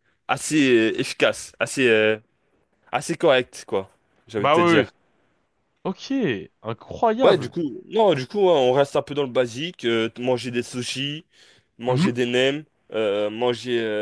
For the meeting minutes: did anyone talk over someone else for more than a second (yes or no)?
no